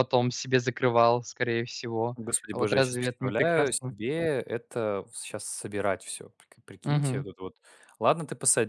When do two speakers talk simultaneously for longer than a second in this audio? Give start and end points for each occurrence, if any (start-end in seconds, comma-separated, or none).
2.2-3.9